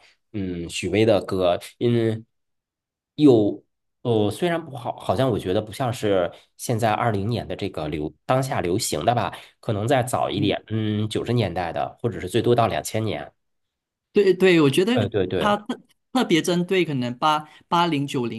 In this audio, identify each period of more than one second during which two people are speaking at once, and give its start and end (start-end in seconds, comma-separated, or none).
none